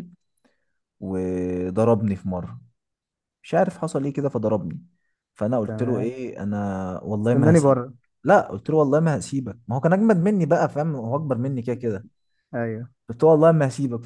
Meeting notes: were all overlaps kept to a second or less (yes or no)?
yes